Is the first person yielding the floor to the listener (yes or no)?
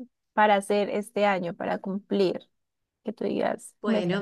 yes